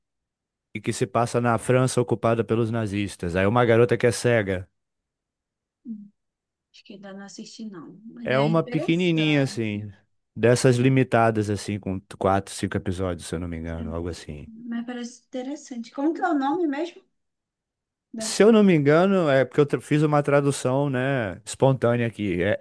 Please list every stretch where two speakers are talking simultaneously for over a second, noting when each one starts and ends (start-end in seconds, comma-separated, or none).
8.2-9.6